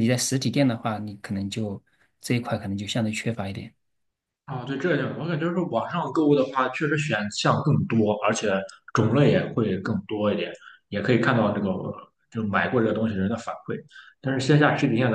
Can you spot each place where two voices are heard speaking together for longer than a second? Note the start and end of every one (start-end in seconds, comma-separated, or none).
none